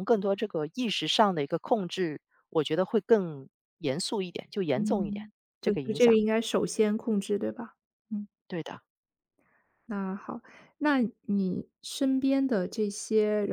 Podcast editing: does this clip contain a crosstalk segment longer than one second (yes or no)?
yes